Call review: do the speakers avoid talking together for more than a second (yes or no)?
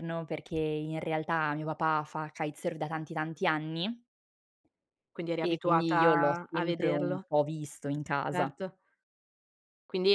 no